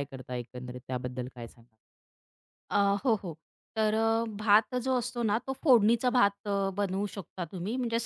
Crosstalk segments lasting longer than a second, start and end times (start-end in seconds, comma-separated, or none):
none